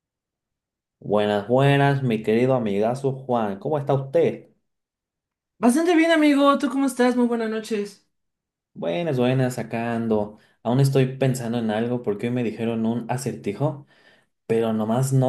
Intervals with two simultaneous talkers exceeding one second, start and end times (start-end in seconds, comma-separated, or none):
none